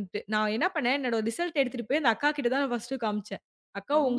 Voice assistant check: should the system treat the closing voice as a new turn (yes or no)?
no